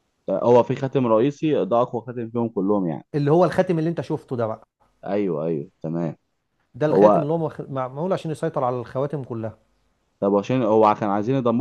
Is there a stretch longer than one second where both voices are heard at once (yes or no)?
no